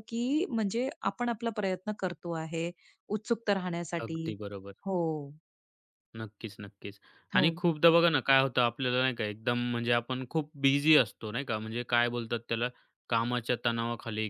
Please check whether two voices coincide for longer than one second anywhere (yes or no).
no